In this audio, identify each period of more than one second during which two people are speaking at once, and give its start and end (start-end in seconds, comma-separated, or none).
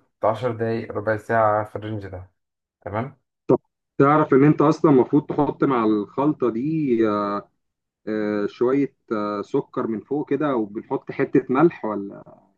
none